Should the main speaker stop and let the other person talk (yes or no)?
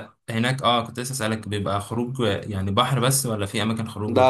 yes